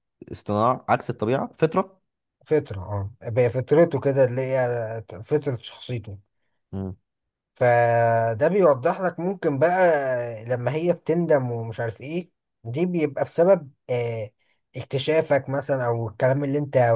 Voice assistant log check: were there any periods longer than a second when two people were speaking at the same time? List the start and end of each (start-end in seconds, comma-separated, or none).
none